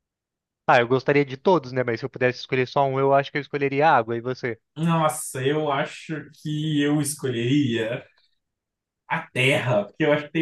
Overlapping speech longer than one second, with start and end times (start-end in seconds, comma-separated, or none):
none